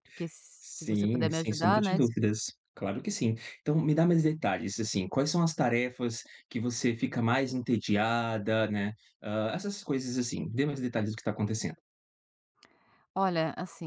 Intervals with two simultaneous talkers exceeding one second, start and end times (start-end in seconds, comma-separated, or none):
0.6-2.0